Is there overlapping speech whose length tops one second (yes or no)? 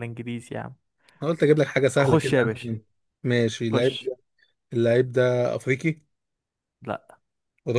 no